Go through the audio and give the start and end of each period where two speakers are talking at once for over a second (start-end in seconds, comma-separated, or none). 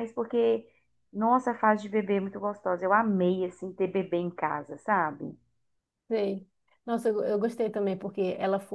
none